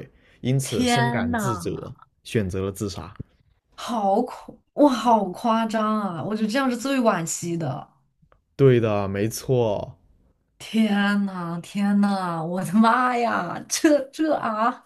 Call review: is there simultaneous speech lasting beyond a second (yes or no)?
yes